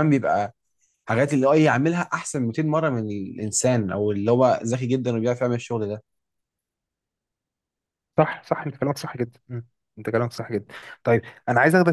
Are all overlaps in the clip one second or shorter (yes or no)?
yes